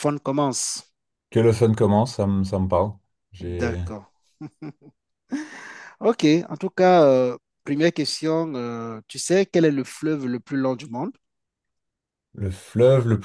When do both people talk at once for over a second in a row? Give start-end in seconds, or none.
none